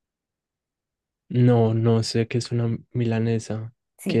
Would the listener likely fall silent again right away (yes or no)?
no